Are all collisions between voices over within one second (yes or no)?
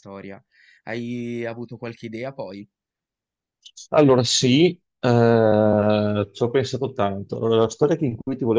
yes